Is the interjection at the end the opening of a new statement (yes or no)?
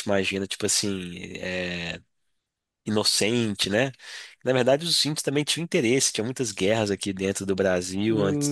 yes